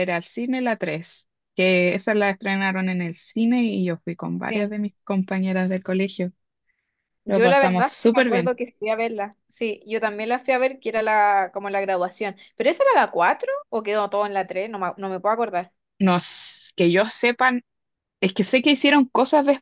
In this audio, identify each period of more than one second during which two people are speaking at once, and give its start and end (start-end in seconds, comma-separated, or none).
7.3-8.5